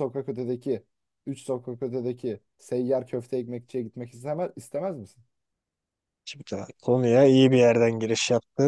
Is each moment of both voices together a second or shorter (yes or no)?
yes